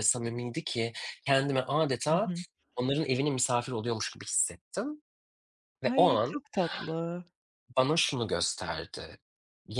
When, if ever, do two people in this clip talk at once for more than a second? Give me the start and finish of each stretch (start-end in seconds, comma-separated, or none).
none